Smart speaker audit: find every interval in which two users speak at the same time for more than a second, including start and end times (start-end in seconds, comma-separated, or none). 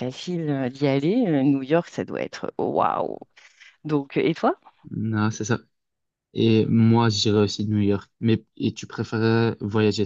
none